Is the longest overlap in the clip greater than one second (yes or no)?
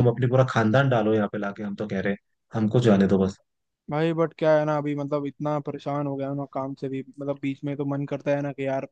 no